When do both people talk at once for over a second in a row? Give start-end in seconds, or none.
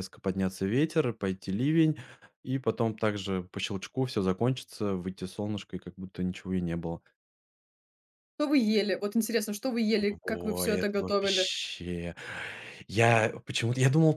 10.2-11.5